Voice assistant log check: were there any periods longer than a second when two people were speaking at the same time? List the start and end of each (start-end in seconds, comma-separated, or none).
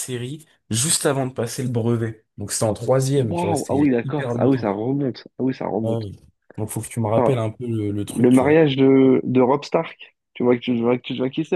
3.2-4.7